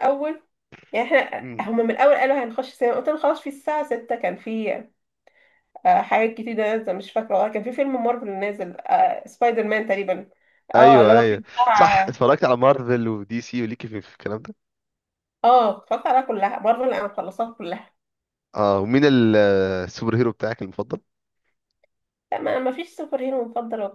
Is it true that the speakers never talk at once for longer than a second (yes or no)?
no